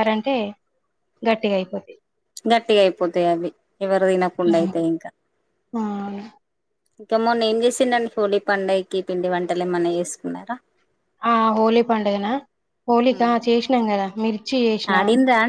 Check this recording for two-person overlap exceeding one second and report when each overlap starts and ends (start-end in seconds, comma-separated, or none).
none